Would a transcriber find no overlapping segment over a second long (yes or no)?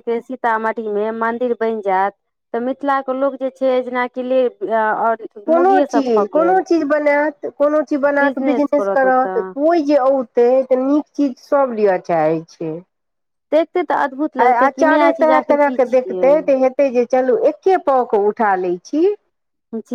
no